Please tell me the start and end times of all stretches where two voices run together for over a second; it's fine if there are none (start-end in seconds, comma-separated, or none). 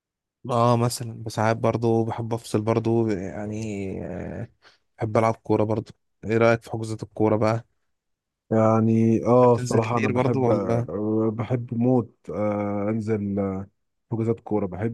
9.4-10.9